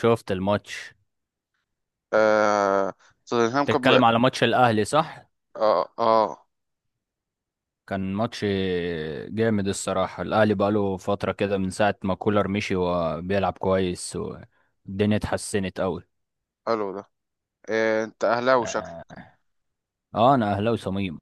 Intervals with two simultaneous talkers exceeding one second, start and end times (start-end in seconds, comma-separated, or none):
none